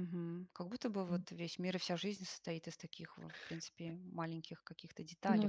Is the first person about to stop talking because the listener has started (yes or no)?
yes